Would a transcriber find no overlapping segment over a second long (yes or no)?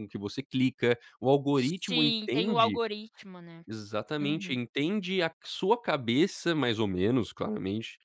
no